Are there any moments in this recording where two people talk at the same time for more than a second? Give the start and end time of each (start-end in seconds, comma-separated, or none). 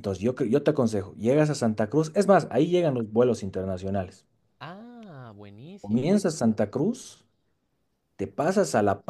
none